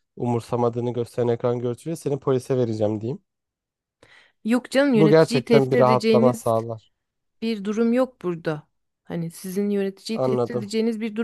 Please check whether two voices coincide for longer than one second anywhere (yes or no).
yes